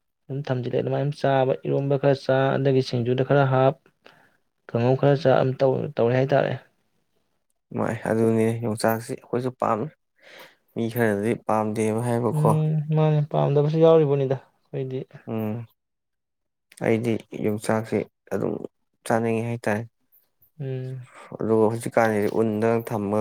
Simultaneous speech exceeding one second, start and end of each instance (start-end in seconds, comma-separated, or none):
none